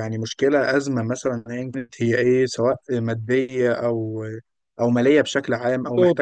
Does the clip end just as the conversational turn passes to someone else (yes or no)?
no